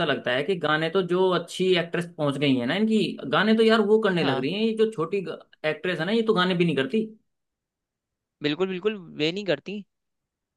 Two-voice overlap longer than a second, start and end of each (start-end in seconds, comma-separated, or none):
none